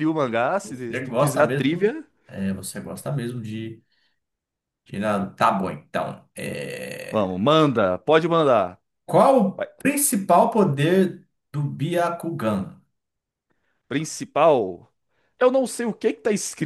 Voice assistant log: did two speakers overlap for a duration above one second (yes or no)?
yes